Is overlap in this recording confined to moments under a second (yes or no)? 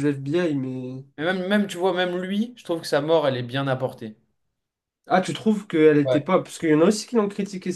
yes